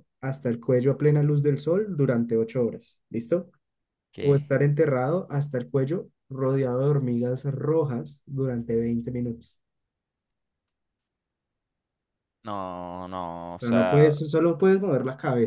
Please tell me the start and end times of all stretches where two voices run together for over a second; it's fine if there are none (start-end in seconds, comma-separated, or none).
none